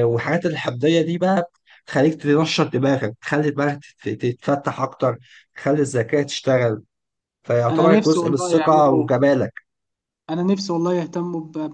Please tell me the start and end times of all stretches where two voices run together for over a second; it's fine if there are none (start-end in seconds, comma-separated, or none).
7.7-9.1